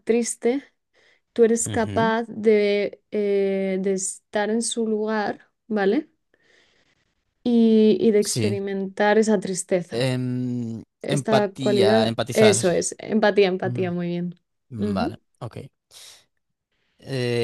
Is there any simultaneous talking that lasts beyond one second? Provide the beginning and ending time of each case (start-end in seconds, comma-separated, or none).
11.0-12.6